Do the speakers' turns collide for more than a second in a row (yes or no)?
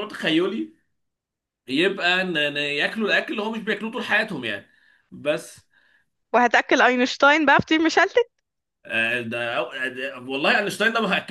no